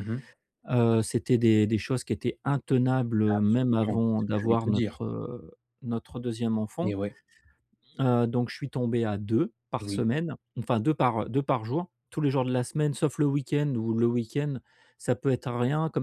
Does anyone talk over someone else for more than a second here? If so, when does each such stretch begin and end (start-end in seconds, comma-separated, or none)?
3.4-5.0